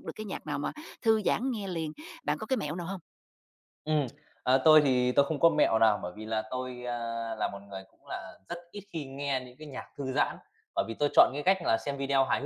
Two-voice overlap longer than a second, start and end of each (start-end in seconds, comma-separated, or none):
none